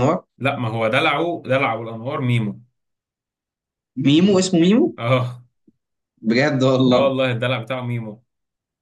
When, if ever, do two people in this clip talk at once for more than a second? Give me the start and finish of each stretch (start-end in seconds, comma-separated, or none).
none